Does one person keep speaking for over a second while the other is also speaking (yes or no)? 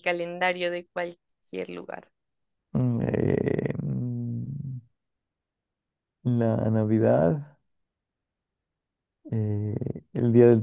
no